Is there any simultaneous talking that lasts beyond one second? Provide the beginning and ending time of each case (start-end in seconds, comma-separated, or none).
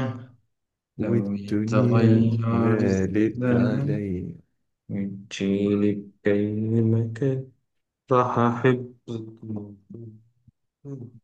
1.0-4.0